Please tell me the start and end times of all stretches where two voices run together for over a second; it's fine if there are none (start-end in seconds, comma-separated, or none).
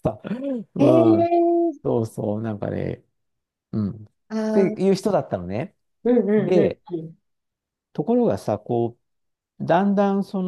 none